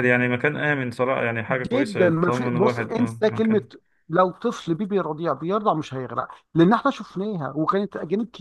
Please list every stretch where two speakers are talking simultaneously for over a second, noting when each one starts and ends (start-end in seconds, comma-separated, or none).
1.7-3.6